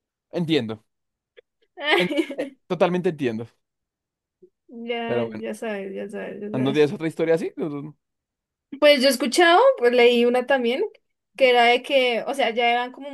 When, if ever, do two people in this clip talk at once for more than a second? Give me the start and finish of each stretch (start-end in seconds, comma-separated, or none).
none